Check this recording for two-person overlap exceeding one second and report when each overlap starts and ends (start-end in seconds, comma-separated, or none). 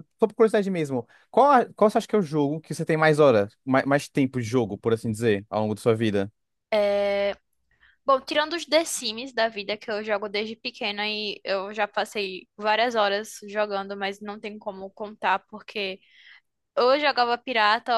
none